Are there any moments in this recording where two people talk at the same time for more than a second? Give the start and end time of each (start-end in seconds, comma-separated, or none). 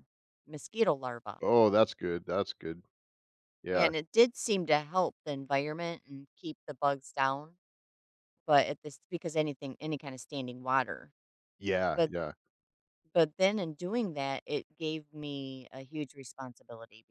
none